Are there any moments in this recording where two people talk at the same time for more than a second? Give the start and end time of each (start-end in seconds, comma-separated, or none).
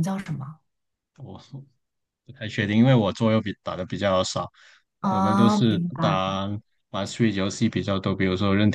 5.1-6.4